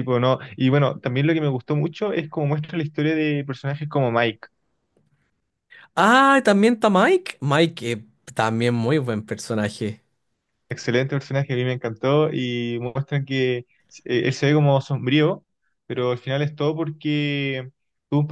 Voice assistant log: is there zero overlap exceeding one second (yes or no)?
yes